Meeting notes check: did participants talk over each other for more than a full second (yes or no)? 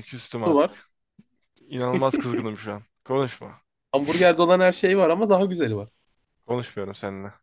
no